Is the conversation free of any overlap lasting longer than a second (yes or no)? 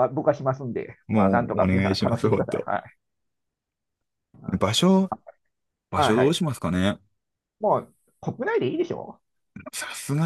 no